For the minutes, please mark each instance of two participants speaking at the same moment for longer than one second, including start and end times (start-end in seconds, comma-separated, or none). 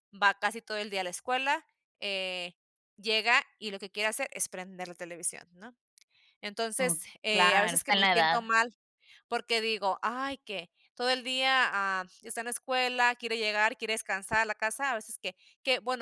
6.8-8.4